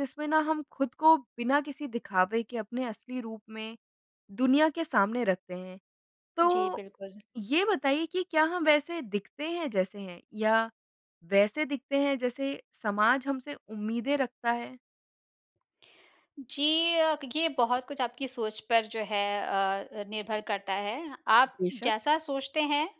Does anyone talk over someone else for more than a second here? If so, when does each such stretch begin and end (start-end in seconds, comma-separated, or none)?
none